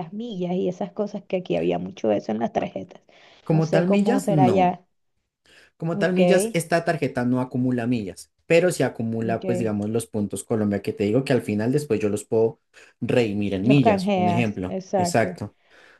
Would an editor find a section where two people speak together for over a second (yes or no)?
yes